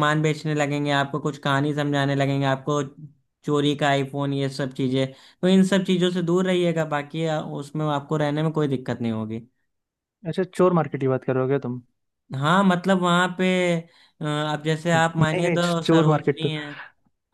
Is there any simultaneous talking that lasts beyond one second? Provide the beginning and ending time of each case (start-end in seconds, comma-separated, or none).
14.9-16.5